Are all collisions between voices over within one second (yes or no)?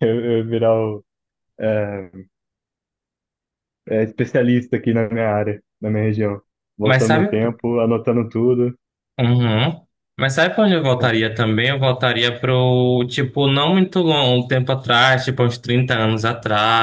yes